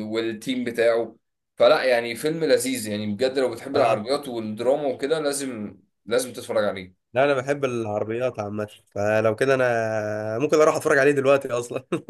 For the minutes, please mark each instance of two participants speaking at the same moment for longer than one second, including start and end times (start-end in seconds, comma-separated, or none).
none